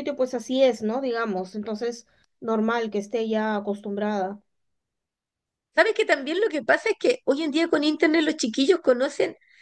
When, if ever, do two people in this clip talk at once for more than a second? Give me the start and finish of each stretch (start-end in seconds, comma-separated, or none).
none